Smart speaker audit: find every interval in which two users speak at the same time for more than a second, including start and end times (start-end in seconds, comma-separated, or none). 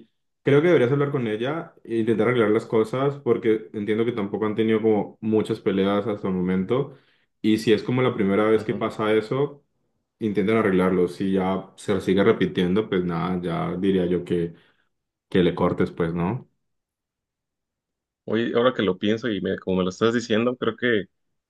none